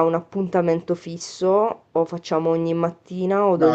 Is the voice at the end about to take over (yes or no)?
yes